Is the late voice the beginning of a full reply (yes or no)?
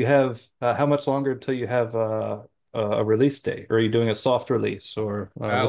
yes